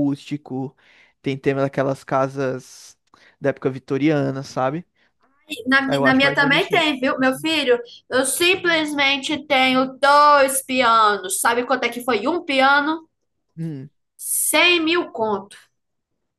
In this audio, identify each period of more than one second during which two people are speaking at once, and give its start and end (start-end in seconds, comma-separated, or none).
5.9-7.5